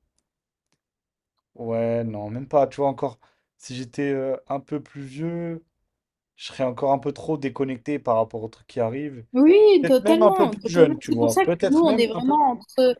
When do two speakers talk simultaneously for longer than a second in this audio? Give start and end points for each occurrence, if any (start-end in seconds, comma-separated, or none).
9.8-12.2